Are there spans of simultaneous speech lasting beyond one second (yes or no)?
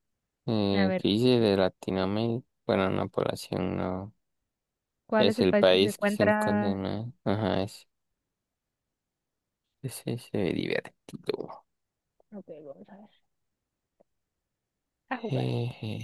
yes